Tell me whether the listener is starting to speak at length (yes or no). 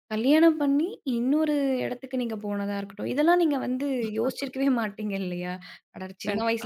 no